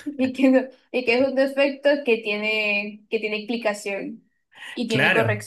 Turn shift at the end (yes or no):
yes